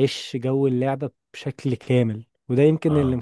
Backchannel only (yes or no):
yes